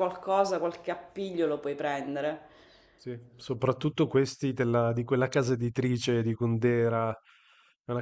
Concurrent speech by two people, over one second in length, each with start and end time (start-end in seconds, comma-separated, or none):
none